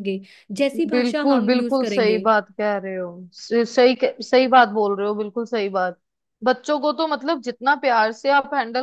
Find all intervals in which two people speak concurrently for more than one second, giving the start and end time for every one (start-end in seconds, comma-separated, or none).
0.9-2.2